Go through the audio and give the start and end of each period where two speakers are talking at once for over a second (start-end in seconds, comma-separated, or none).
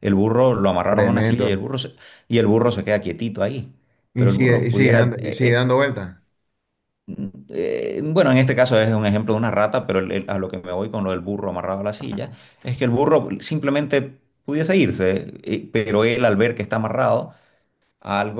4.2-5.7